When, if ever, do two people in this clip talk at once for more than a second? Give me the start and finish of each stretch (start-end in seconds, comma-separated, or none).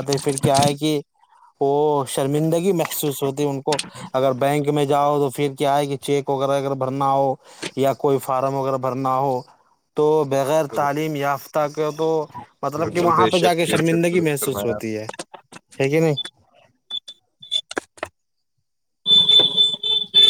12.8-14.8